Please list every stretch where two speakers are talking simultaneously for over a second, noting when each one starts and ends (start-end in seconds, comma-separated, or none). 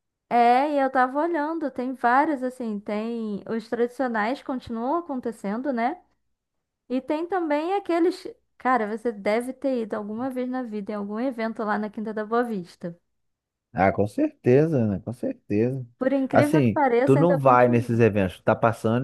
16.3-18.0